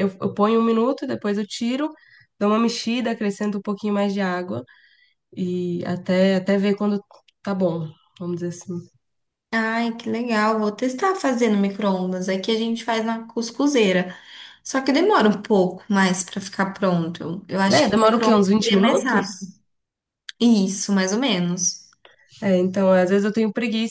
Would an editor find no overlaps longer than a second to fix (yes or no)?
no